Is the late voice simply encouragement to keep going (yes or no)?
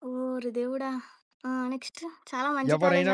yes